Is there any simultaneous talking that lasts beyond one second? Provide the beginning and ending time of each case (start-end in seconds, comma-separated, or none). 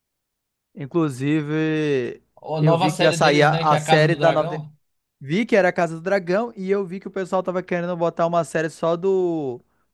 2.6-4.5